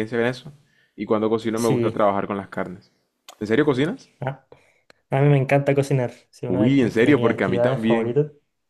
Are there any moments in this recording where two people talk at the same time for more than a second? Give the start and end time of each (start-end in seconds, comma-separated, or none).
6.5-8.2